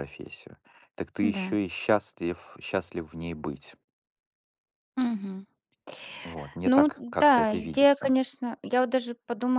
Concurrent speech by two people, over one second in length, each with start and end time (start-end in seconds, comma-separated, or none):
6.7-8.2